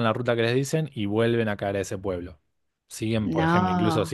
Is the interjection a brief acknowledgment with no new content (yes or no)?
yes